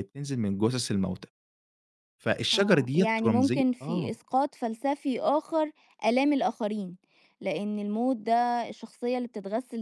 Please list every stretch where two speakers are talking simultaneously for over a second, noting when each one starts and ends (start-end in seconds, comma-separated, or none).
2.5-4.1